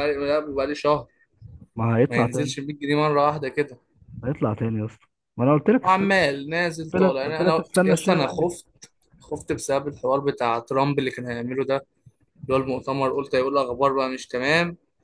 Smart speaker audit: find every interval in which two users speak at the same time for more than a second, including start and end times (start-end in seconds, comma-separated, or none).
6.8-8.5